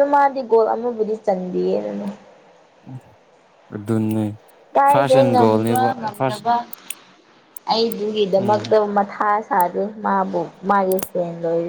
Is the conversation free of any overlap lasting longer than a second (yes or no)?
no